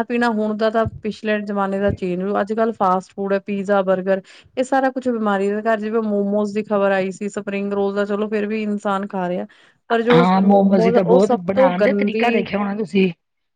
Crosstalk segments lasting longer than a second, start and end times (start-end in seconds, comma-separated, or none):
10.2-12.3